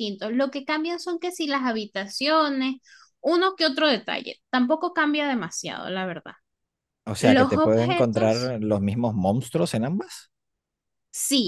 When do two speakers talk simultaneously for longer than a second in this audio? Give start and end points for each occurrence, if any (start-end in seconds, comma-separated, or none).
7.2-8.6